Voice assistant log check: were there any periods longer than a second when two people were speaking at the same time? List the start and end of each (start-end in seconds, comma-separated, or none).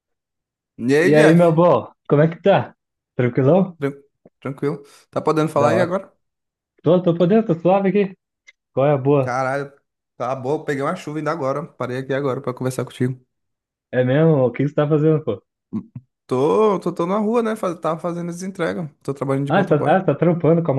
none